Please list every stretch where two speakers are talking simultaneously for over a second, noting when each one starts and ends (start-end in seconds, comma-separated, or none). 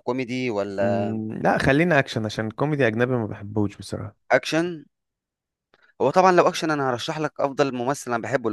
none